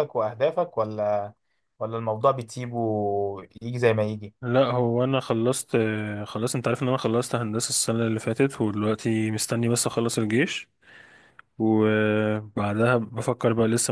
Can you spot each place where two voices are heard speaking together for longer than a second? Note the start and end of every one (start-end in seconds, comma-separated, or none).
none